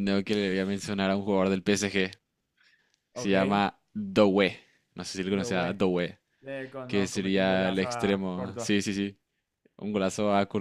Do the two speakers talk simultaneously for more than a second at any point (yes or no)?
yes